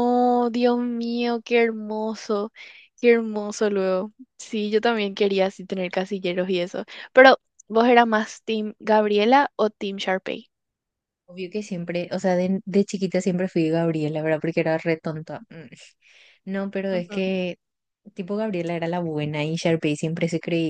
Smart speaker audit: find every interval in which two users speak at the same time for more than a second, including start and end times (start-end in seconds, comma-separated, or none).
none